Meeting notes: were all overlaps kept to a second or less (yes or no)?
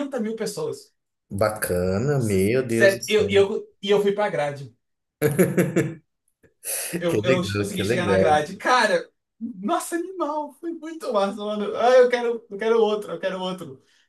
no